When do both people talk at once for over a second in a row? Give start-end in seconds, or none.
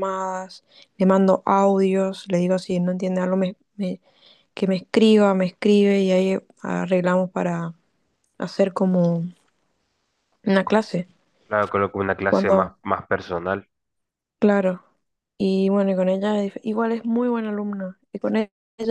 none